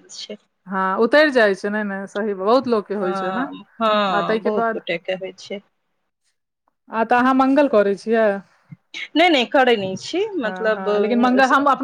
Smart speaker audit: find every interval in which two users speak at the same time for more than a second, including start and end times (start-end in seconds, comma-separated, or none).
3.0-4.8